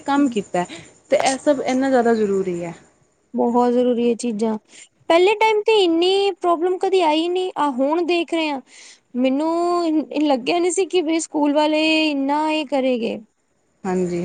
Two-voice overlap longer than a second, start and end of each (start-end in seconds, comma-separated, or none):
none